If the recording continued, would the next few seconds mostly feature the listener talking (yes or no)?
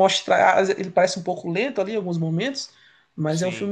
no